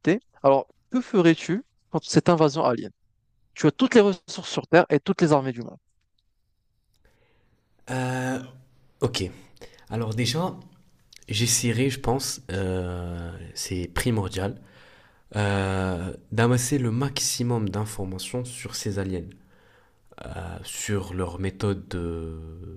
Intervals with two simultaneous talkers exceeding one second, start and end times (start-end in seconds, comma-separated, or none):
none